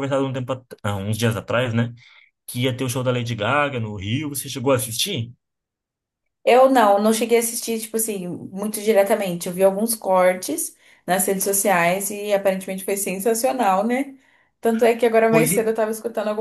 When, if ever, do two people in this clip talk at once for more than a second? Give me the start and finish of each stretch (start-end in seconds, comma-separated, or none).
none